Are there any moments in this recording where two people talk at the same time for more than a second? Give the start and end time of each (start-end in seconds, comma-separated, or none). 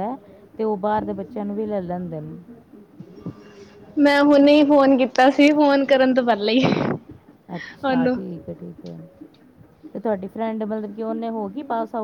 none